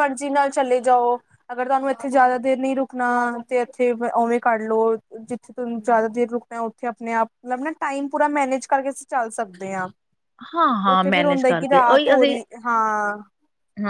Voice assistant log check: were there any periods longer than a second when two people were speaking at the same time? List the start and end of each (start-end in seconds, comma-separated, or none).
10.9-12.4